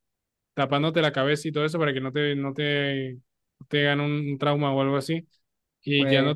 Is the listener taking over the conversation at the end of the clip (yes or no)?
no